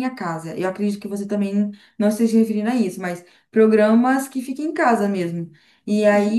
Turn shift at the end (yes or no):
no